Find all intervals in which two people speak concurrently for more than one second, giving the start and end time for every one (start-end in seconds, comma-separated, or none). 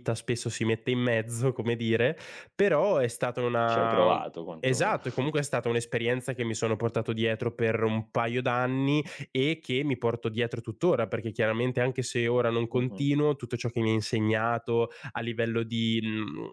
3.6-5.0